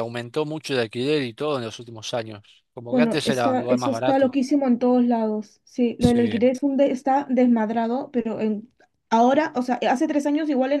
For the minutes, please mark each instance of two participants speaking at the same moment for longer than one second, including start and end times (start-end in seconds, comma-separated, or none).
2.9-4.3